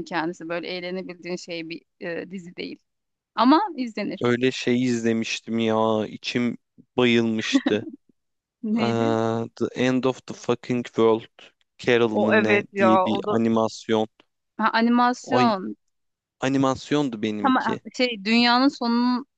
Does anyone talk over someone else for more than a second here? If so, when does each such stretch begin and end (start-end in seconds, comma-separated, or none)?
12.1-13.4